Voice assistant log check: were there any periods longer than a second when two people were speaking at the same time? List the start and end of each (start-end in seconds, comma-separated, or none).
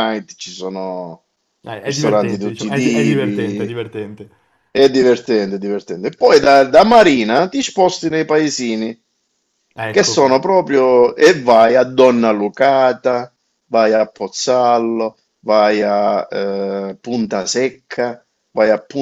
1.8-3.8